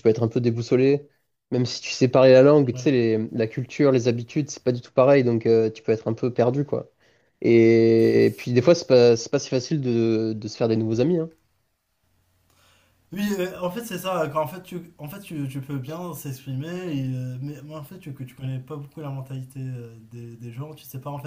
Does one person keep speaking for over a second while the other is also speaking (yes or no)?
no